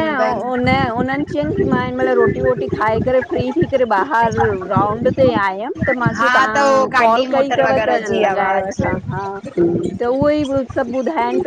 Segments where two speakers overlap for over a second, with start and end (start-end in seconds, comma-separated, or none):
6.2-8.8